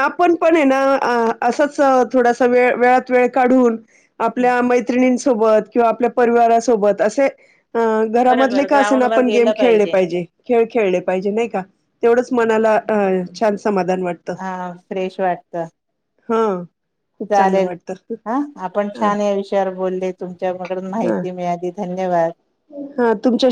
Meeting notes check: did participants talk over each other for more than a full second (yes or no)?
yes